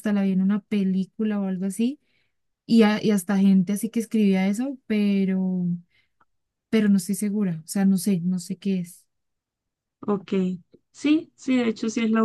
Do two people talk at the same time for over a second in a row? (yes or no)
no